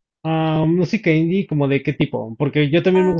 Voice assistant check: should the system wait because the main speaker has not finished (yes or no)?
yes